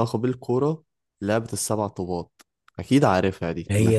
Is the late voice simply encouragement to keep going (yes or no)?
no